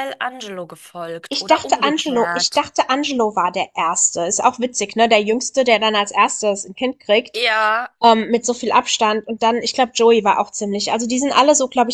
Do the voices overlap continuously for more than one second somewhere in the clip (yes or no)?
yes